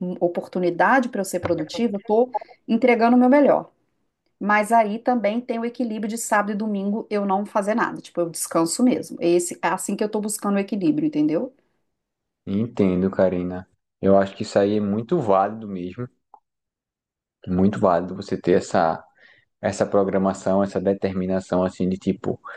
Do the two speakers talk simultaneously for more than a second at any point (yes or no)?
no